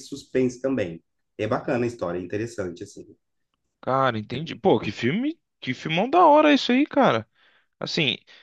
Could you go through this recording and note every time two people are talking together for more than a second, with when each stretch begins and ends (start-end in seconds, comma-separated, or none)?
none